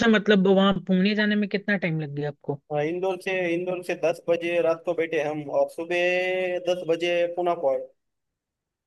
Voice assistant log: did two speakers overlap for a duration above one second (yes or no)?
no